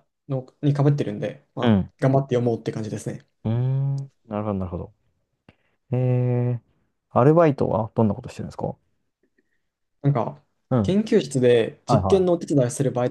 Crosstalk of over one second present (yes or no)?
no